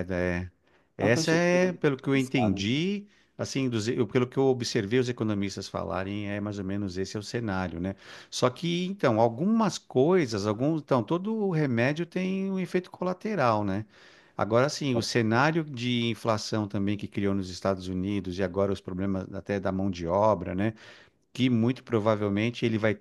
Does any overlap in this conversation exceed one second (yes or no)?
yes